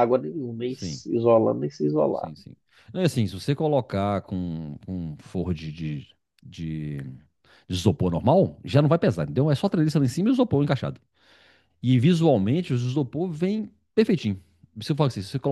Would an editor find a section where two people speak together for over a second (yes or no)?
no